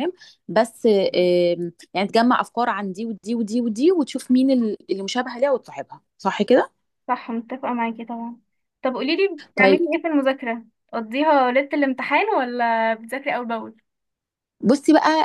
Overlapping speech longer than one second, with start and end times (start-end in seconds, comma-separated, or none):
none